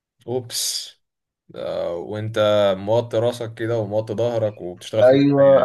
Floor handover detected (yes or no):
yes